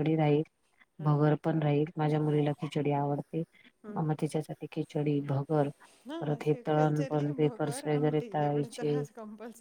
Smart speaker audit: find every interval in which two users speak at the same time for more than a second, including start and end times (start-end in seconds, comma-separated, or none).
6.5-8.9